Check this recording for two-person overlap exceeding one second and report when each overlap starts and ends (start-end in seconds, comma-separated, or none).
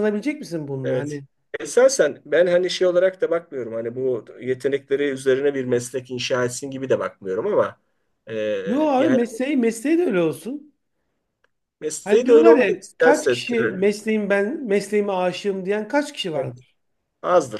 12.0-13.8